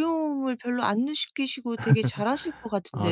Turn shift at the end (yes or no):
yes